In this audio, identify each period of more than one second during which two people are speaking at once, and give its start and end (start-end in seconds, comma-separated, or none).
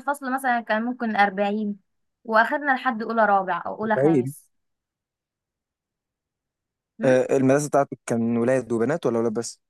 none